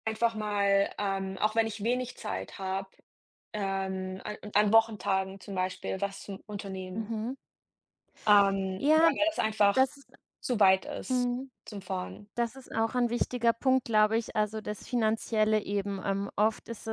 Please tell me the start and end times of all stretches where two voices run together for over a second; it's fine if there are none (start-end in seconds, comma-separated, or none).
none